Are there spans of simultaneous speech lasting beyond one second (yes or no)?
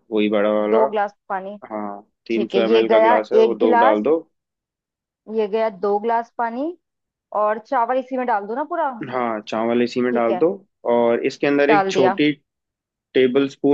yes